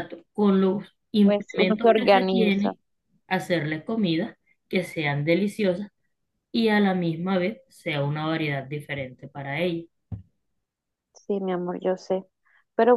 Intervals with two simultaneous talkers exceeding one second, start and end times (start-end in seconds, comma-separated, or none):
1.2-2.7